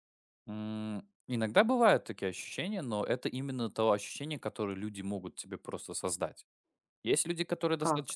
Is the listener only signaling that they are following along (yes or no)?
yes